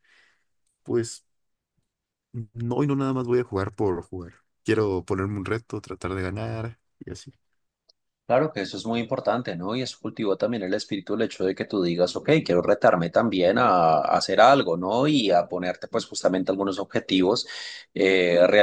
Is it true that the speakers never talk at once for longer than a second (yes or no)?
yes